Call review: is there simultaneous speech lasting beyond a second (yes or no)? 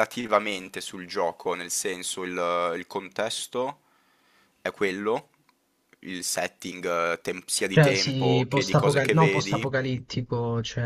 yes